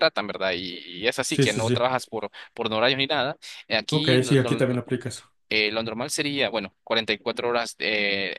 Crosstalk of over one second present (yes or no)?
no